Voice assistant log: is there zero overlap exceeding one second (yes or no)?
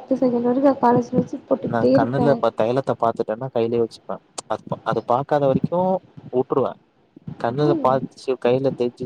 yes